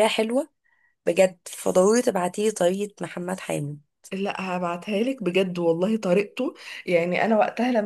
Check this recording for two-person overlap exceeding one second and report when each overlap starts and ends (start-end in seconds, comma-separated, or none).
none